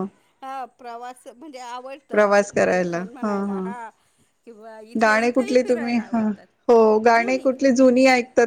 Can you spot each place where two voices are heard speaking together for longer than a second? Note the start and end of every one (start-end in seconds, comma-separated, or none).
2.1-3.7, 5.0-6.3